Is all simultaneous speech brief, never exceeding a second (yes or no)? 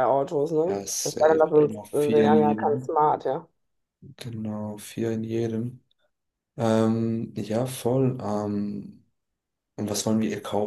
no